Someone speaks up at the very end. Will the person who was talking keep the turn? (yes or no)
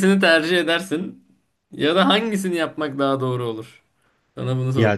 no